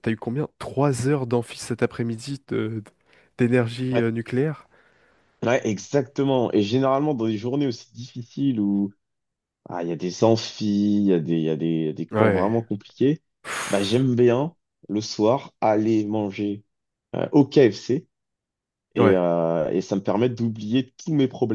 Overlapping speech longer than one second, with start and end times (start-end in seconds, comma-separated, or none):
none